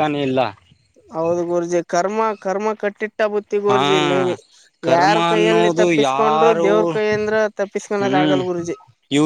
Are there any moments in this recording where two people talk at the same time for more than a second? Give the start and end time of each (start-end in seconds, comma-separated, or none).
4.9-6.7